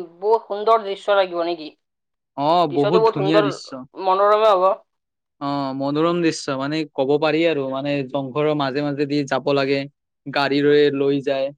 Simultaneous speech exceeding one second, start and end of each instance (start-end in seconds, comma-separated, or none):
none